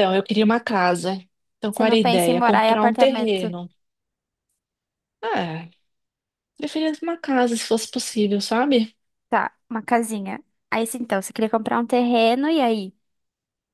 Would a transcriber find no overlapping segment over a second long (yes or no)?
no